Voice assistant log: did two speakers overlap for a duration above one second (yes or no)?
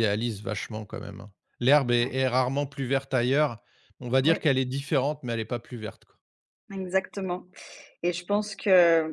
no